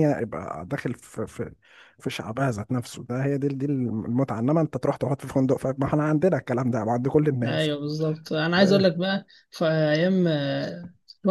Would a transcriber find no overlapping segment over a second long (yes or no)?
yes